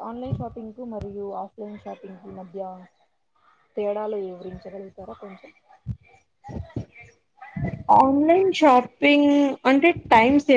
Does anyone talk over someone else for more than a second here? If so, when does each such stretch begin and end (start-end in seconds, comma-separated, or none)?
none